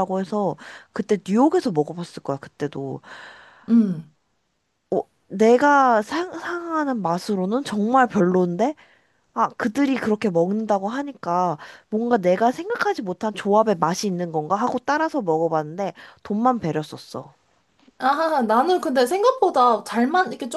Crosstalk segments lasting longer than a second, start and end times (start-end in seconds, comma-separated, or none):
none